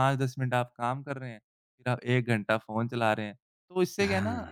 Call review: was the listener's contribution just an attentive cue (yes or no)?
yes